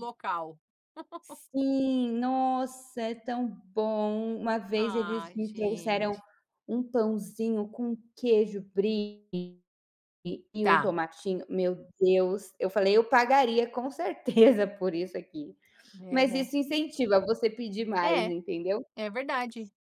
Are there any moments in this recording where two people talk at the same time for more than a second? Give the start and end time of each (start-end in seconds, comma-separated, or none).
4.8-6.2